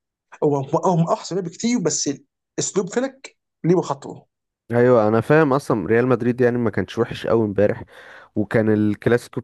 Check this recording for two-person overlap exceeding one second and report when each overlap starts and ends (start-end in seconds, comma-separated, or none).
none